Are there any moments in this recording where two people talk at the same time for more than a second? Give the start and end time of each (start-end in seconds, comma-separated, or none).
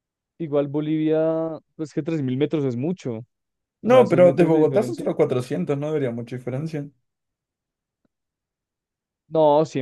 3.8-5.1